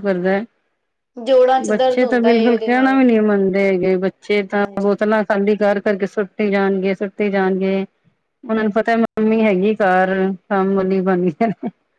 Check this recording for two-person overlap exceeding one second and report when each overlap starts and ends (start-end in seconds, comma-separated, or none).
1.7-3.0